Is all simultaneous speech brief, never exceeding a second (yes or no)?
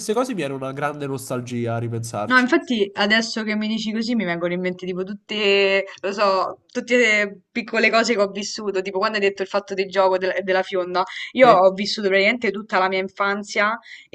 yes